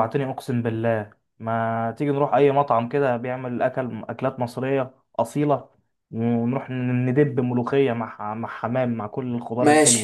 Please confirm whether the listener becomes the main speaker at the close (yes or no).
yes